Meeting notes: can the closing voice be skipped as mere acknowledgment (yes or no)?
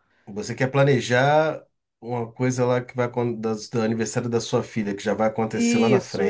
no